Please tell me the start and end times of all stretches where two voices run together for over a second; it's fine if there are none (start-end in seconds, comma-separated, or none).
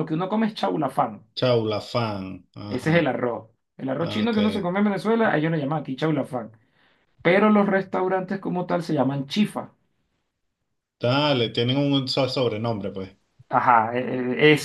none